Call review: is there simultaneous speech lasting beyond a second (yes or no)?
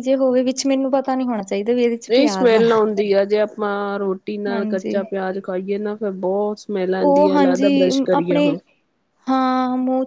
yes